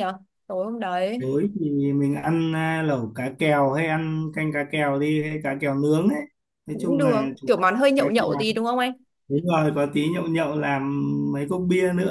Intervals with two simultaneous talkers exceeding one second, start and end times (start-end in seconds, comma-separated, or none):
6.7-8.4